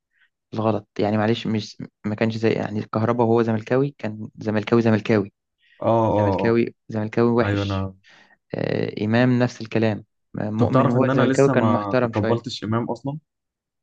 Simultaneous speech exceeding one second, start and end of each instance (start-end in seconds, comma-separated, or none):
10.6-12.6